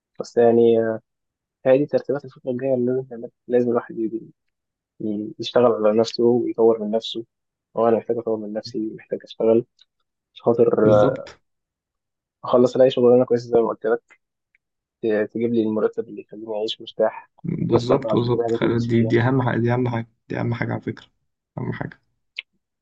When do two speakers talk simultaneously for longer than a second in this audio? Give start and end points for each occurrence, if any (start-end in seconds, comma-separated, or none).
17.7-19.1